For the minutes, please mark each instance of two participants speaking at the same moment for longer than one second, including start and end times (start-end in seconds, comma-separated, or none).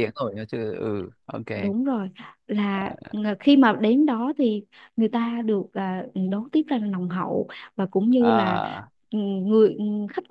none